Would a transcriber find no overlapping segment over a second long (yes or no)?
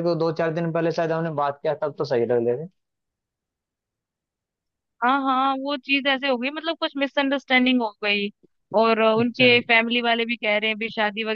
yes